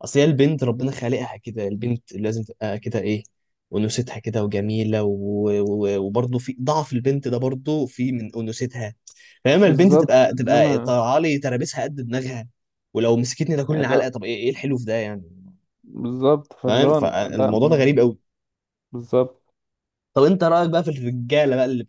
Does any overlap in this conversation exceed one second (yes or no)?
yes